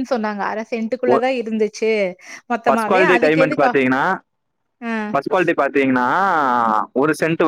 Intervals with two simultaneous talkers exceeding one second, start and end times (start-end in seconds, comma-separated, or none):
2.7-4.0